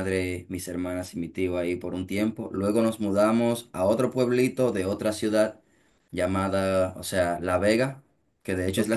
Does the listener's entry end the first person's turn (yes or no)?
no